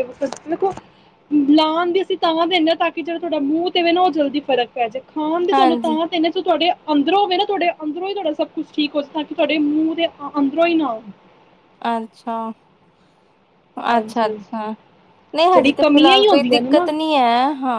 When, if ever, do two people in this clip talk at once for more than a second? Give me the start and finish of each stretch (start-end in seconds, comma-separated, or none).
15.5-16.9